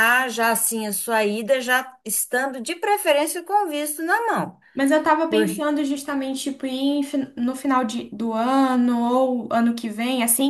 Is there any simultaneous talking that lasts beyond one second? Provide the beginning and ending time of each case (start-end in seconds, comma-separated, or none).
none